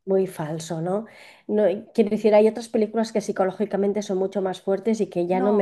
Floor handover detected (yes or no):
yes